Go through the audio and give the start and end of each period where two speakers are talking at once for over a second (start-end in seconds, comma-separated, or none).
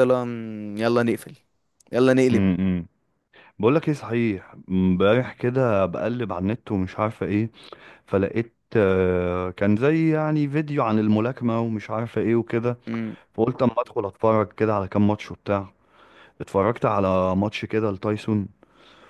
none